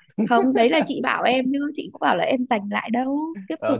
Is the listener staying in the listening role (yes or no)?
no